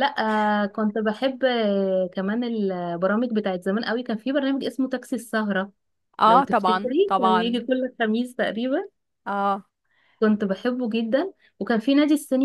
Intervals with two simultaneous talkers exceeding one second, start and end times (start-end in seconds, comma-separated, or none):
6.3-7.7